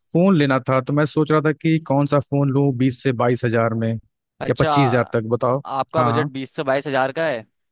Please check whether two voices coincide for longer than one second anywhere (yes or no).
no